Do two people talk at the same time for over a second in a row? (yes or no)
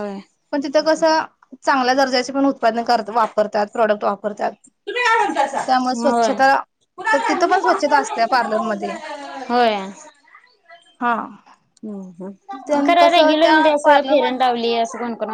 yes